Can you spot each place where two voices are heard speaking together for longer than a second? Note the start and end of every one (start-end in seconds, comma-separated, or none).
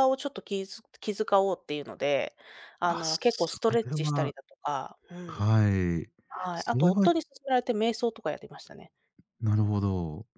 2.8-4.3